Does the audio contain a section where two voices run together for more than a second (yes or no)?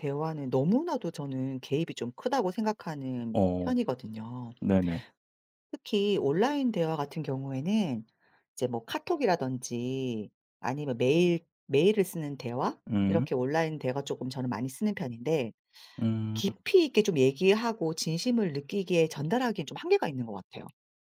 no